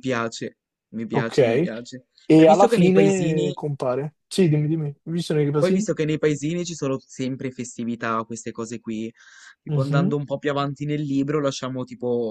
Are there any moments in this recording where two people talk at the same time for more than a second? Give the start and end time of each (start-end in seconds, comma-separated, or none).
2.3-3.6